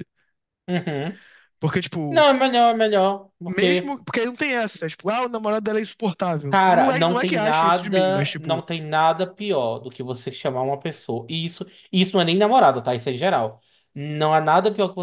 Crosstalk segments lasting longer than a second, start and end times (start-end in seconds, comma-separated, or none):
6.5-8.7